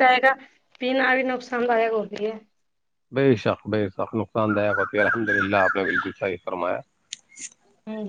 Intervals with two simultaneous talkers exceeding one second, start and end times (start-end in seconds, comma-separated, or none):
none